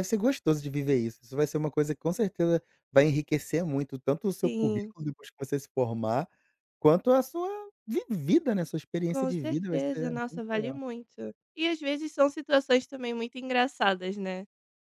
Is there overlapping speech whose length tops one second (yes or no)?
yes